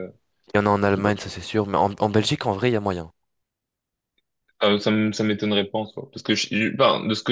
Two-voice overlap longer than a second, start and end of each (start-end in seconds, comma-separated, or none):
none